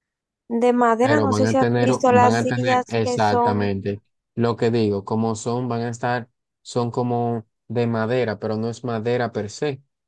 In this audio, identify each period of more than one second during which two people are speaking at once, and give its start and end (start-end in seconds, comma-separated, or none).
1.0-3.7